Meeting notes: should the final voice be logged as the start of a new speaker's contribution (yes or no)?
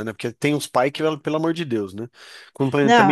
no